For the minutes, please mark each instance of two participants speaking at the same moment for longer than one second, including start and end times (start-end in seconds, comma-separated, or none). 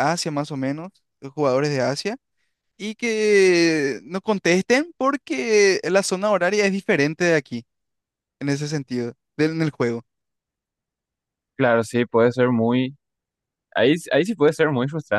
none